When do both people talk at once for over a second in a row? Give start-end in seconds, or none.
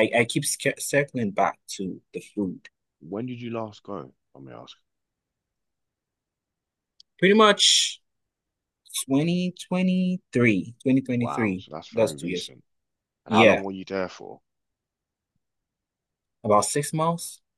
11.2-12.5